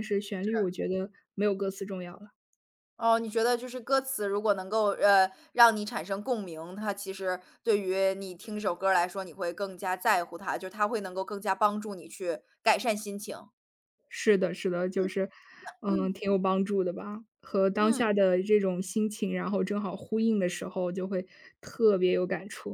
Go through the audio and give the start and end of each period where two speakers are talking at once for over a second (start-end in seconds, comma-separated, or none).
none